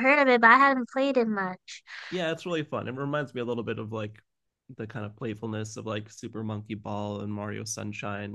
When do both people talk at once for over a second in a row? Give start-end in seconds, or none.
none